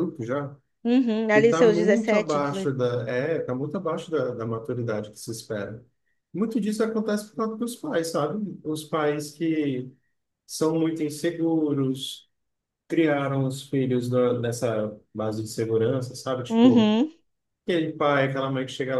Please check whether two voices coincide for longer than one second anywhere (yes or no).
yes